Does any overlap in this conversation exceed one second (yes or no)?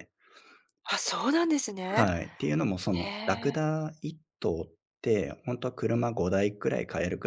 no